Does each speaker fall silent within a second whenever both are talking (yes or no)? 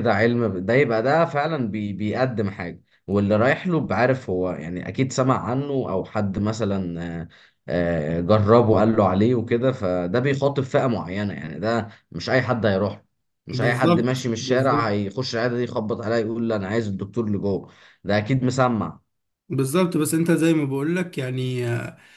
no